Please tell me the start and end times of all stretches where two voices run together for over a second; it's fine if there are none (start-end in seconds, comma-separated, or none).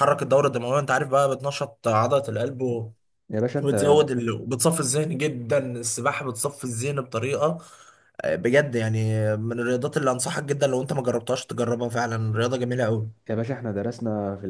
none